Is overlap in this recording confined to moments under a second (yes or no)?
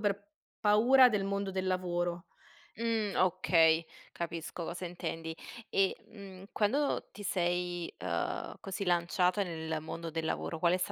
yes